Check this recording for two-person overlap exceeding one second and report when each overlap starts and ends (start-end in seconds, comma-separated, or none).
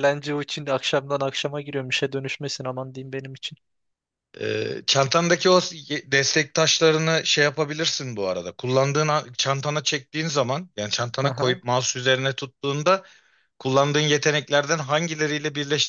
none